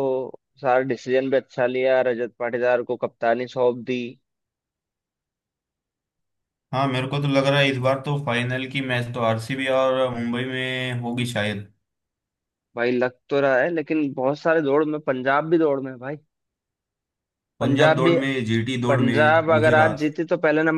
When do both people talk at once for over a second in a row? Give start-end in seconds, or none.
18.9-20.1